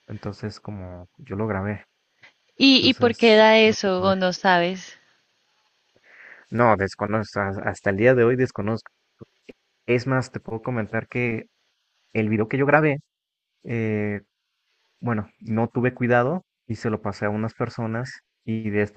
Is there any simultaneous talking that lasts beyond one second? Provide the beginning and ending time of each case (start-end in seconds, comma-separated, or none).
2.7-4.1